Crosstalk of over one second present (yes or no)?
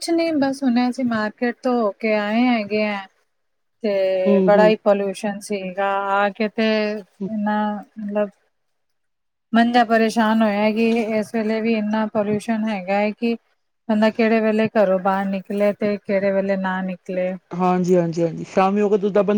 no